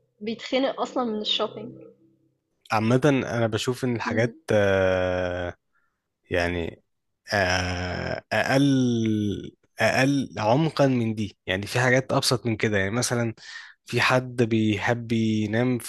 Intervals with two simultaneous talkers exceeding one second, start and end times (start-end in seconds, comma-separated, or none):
none